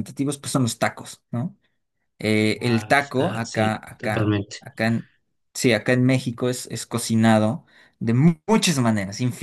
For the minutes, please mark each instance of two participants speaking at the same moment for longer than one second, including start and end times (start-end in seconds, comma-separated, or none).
2.5-4.7